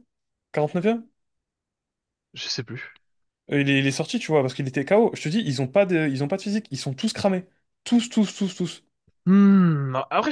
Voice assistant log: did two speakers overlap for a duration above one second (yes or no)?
no